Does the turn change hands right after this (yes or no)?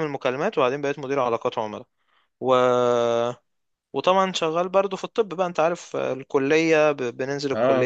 no